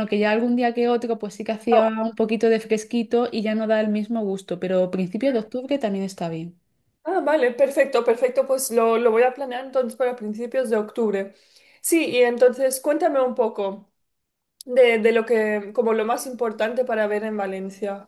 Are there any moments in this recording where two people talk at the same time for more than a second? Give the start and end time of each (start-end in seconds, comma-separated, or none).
none